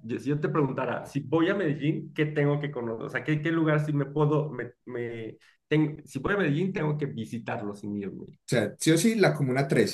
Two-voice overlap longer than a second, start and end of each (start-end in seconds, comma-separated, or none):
none